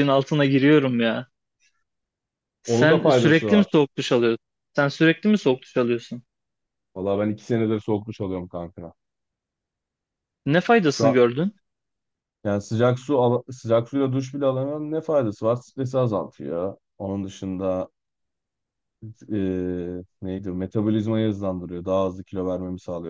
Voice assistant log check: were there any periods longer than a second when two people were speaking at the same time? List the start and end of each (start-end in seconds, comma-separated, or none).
2.6-3.9